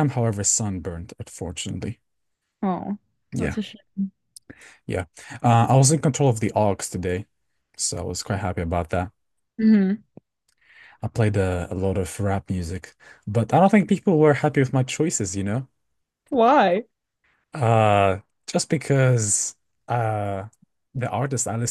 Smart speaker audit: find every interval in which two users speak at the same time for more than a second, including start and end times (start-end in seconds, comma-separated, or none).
none